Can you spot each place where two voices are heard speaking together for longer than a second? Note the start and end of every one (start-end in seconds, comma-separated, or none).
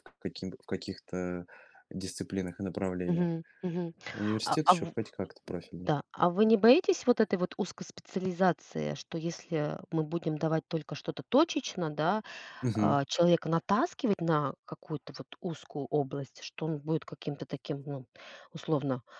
none